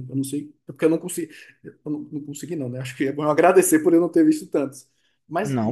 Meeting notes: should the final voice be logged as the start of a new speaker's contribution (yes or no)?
yes